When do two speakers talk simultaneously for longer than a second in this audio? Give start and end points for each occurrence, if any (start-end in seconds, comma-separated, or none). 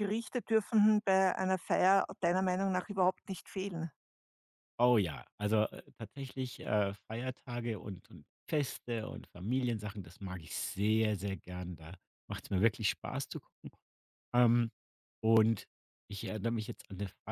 none